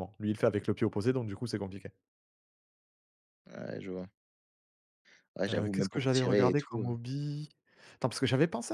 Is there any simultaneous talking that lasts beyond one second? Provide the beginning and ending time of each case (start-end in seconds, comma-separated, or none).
5.5-6.9